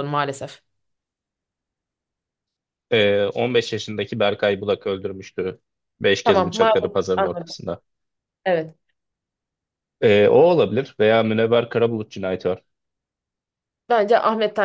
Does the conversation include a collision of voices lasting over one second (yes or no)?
yes